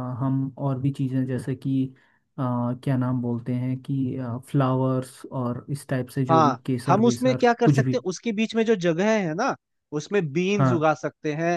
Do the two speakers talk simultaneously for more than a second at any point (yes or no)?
yes